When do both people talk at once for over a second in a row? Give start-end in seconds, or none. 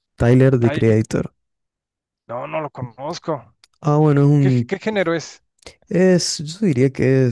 none